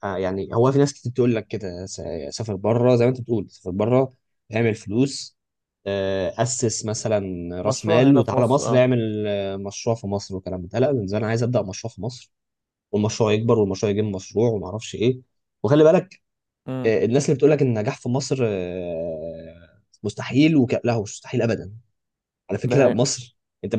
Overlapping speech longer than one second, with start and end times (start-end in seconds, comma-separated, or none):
7.6-8.8